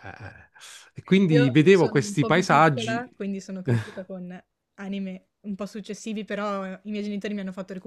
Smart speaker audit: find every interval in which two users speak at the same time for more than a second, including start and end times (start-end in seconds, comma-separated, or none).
1.3-3.0